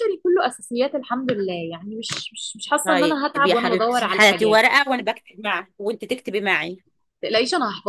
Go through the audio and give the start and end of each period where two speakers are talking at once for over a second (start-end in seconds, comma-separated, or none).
2.8-4.6